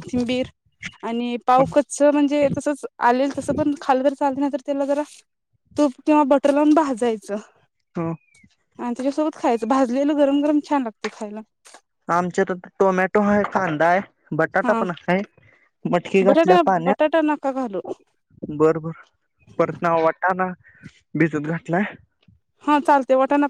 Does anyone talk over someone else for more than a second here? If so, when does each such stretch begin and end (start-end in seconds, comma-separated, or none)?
16.3-17.8